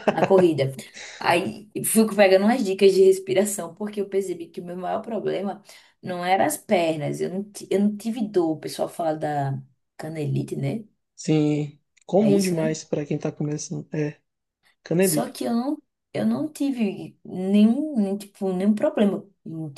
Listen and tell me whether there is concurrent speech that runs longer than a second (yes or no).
no